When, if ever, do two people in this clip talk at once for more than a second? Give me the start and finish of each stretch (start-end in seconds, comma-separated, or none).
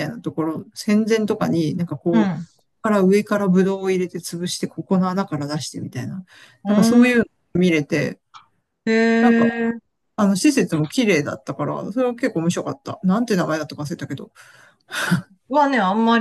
none